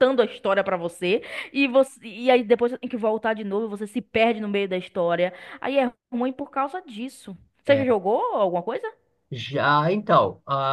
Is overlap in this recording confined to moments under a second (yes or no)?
yes